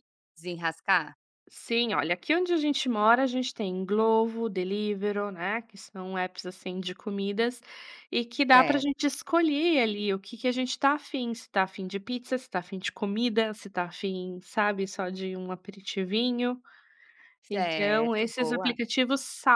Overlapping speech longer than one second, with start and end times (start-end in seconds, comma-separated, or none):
17.5-18.7